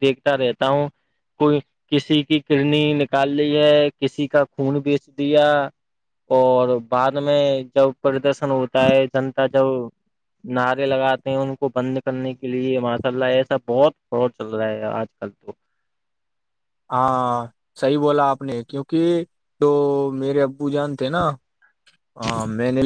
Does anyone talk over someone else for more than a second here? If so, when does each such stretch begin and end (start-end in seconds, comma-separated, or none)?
none